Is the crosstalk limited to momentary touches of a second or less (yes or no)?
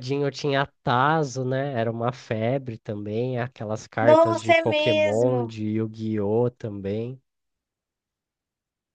no